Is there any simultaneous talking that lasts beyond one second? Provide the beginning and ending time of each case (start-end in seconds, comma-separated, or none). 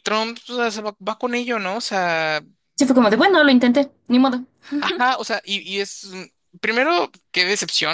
none